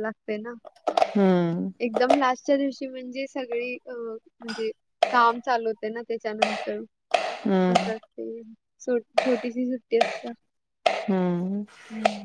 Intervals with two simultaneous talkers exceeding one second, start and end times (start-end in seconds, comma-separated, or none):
none